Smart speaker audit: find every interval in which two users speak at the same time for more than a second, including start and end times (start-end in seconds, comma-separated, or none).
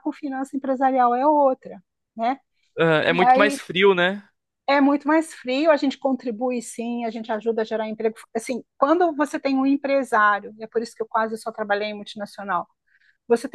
none